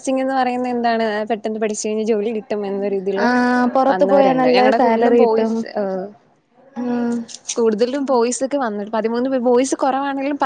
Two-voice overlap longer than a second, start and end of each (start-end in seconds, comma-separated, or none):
3.9-5.5